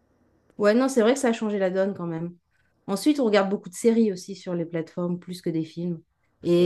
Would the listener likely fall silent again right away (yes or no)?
yes